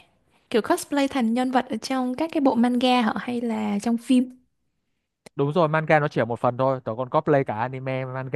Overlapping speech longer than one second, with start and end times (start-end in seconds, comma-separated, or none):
none